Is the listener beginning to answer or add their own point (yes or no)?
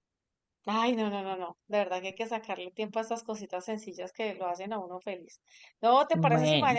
no